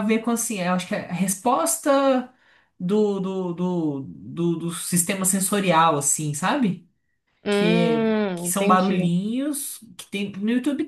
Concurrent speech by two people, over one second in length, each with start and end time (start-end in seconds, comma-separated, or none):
7.5-9.1